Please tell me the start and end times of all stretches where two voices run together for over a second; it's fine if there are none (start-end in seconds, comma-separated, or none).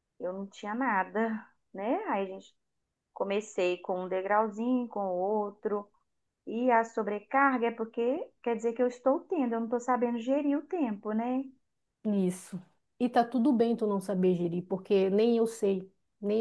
none